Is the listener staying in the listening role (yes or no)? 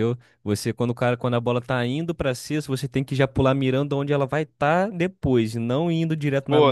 no